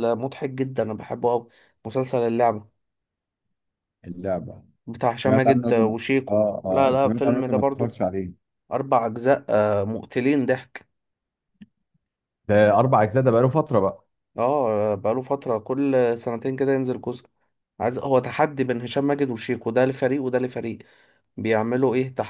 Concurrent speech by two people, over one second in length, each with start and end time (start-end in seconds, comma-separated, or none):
5.1-8.0